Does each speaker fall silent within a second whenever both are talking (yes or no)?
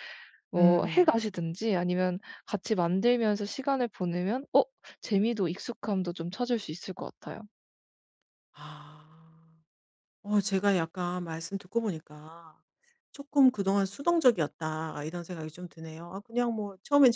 yes